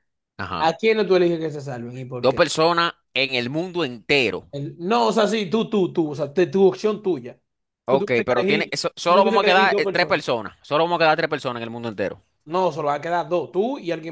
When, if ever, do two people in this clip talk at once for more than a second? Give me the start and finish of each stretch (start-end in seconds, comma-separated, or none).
7.9-10.2